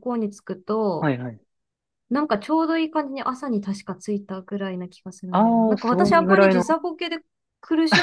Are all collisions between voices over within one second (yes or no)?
no